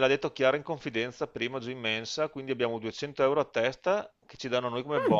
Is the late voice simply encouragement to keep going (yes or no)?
yes